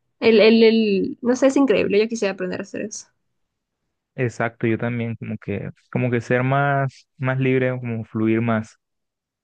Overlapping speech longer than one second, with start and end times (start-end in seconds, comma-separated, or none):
none